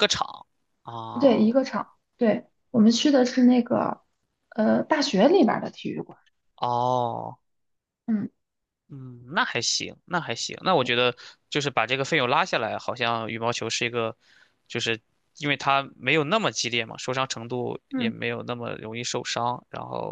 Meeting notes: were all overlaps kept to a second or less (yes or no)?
yes